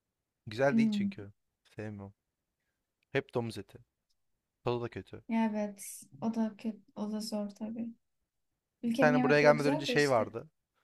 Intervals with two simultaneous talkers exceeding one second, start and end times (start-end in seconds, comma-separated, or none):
8.9-10.3